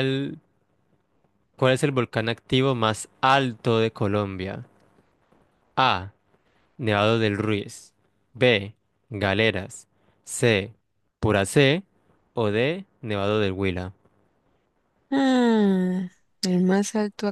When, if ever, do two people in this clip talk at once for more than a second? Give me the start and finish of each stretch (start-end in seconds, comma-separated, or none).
none